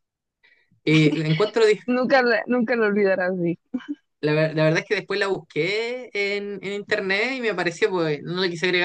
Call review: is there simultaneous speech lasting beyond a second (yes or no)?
no